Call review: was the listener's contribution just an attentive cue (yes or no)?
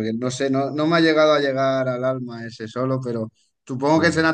yes